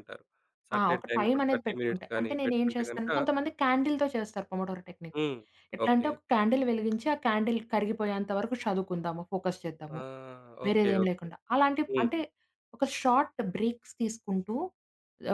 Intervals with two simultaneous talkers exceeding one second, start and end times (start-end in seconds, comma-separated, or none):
0.8-3.1